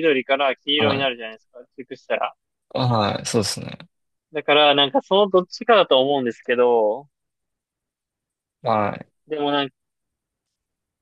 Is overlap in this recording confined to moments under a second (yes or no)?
yes